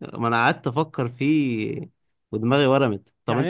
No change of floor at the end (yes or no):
yes